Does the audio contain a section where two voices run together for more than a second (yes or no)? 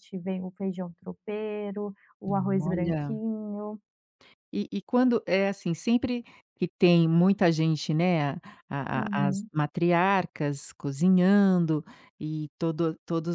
no